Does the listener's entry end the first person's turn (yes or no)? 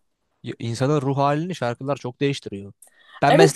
yes